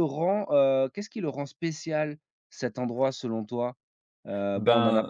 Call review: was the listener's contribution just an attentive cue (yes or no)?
yes